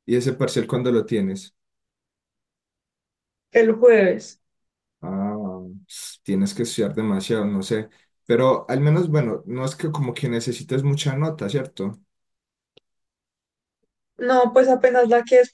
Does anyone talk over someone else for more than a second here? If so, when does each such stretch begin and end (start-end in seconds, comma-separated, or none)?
none